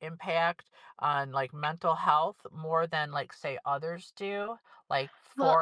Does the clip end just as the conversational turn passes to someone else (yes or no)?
no